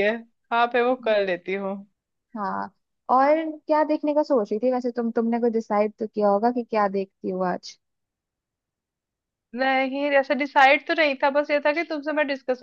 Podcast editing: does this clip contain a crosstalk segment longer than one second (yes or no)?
no